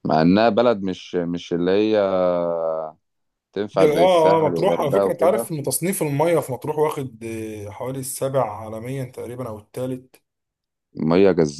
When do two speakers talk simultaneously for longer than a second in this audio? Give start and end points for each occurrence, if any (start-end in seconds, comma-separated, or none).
3.8-5.5